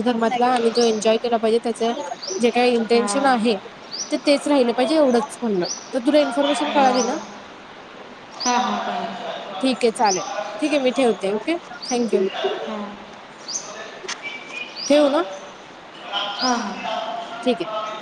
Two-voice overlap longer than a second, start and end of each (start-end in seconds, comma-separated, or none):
none